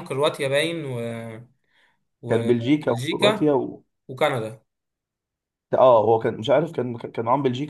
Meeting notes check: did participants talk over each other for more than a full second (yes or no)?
yes